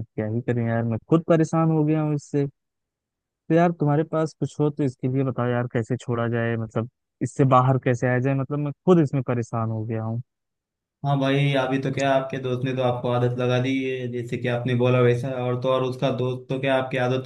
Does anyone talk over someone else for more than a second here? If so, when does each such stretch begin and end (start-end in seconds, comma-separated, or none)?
none